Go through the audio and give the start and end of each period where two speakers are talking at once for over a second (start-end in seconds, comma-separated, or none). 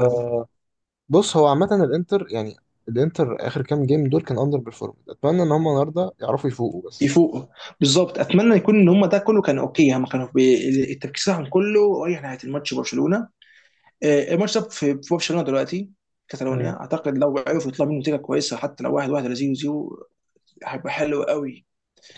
none